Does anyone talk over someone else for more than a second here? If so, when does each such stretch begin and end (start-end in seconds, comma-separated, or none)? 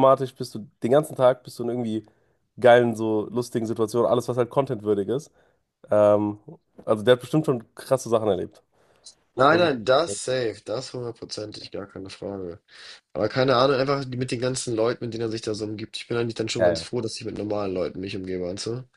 none